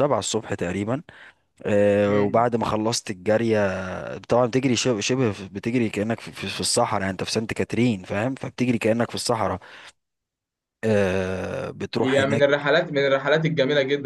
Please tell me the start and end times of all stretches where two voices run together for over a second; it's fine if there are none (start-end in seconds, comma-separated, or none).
none